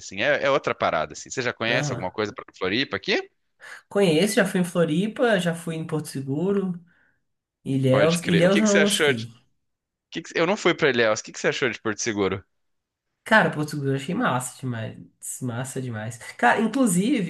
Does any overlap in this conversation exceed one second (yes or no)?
yes